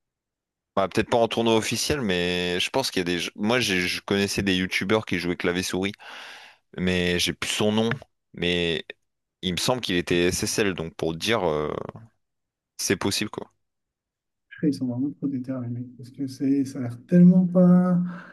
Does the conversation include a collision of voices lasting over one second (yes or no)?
no